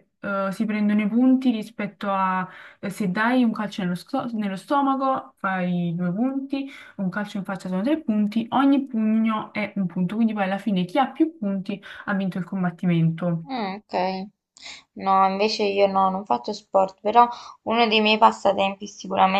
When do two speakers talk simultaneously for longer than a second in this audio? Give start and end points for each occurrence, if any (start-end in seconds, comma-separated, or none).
none